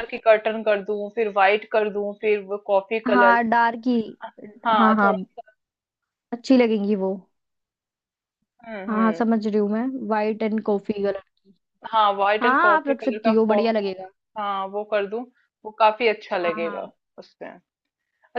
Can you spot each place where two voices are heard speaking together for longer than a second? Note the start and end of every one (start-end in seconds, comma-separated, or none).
12.4-13.9